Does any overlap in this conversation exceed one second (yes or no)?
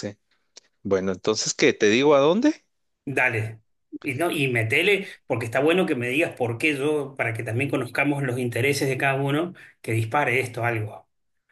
no